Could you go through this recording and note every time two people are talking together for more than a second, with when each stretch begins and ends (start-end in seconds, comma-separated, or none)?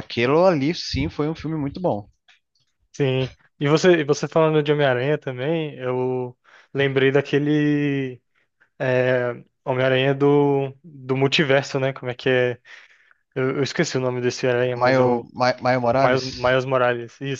none